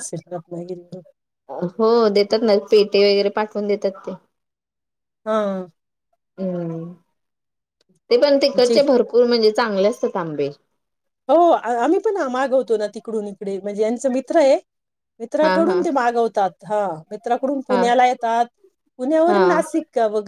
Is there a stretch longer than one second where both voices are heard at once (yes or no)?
no